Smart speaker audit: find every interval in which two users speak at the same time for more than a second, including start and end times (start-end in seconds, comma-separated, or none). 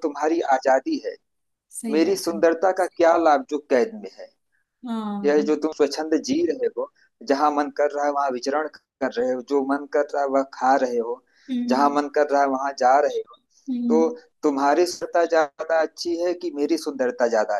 none